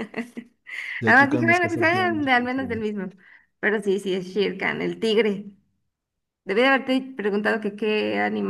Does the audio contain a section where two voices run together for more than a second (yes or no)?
yes